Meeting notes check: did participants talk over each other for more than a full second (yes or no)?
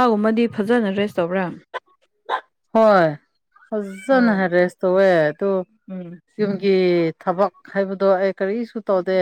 no